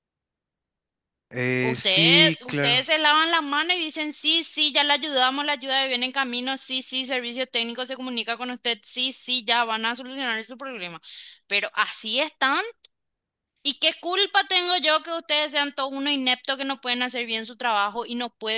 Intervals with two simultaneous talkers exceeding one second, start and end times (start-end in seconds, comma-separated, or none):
1.6-2.8